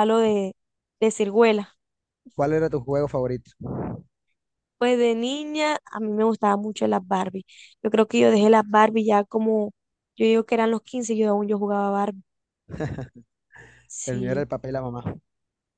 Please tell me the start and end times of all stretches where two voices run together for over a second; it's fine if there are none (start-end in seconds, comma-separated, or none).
none